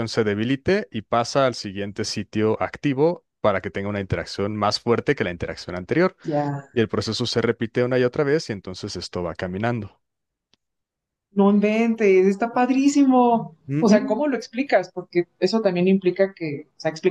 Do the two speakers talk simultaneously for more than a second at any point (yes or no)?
no